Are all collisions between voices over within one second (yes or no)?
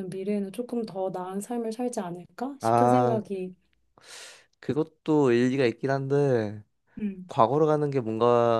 yes